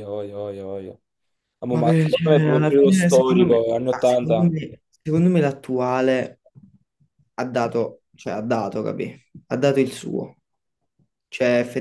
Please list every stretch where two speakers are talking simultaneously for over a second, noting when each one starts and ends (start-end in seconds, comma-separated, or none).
1.7-4.5